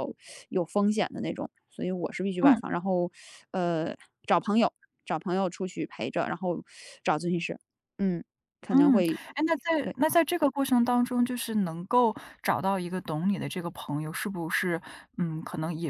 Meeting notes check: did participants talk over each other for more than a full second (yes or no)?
no